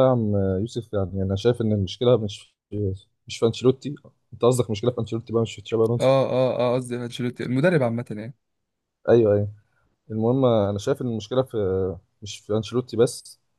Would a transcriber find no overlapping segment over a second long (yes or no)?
yes